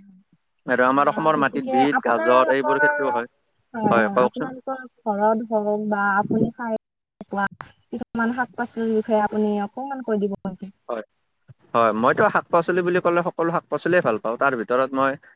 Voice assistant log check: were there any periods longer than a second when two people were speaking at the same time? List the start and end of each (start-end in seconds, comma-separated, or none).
1.2-3.1